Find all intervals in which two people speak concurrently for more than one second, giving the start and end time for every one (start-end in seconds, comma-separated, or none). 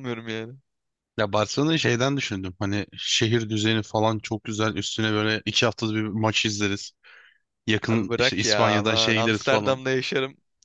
7.9-9.8